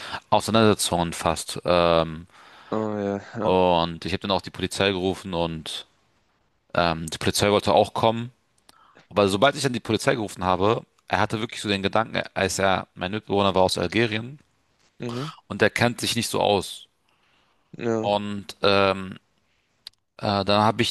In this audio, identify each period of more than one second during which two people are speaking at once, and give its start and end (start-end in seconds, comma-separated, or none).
none